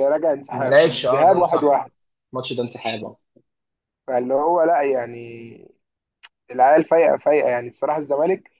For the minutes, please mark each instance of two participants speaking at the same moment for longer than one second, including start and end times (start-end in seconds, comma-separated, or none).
0.5-1.7